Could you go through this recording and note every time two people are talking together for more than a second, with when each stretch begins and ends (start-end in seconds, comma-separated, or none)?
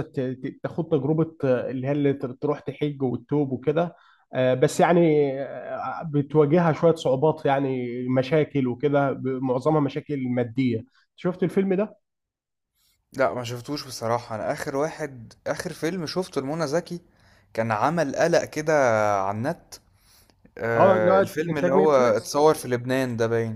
20.8-22.4